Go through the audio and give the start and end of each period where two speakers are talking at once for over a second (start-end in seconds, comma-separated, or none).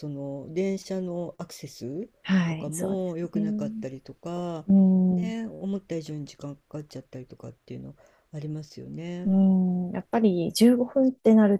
2.5-3.9